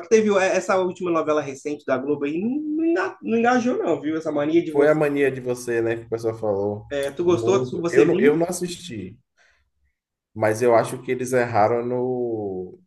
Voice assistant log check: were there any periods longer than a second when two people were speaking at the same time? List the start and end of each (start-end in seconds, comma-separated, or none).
7.2-8.4